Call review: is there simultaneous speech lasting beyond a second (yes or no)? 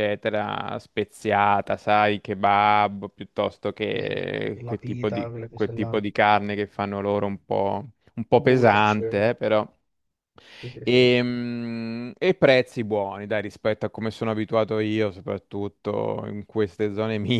yes